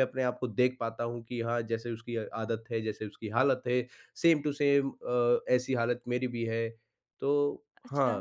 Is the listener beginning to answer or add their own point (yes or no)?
yes